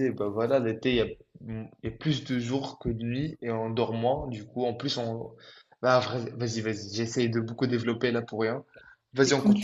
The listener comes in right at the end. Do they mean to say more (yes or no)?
yes